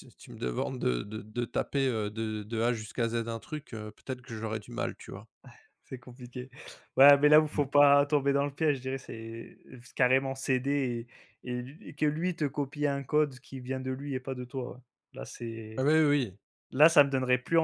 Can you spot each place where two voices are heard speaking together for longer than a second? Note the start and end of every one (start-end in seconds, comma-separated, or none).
none